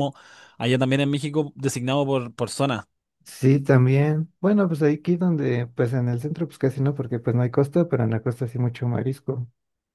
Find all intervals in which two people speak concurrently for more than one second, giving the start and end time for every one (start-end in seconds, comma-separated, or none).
none